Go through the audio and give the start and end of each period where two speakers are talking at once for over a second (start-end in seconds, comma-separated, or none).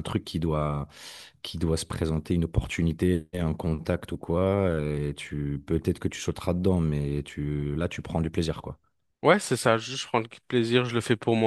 none